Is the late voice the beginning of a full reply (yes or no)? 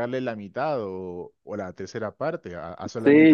yes